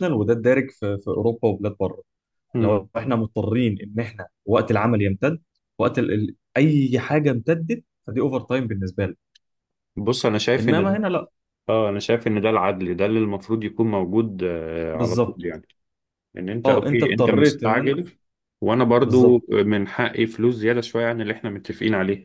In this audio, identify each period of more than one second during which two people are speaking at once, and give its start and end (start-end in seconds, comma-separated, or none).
16.6-17.9